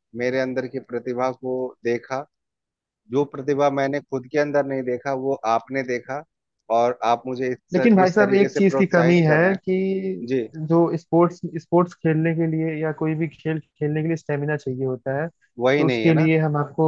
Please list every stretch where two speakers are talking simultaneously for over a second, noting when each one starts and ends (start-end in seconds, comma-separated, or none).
7.7-9.8